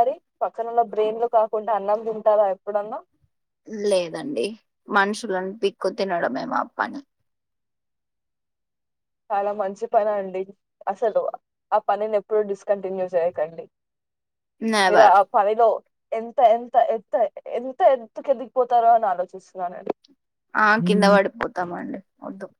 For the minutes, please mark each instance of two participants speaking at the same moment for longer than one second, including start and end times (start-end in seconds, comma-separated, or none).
none